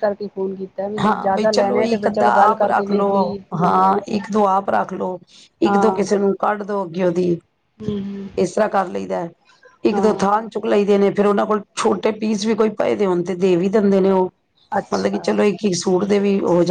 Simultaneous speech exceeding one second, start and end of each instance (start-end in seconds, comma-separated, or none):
1.0-3.1